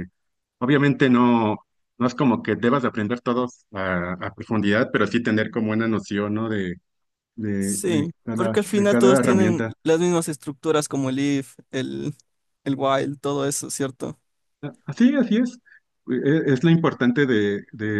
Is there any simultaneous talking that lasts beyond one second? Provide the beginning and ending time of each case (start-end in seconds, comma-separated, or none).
7.6-9.8